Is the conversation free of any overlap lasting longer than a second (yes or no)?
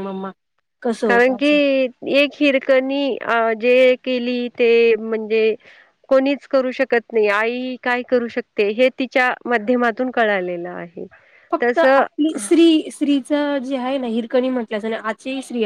yes